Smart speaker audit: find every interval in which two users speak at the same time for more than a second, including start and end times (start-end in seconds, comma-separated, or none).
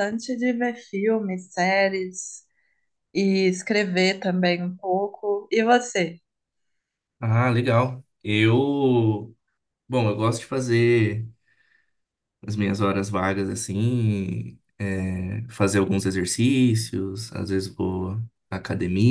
none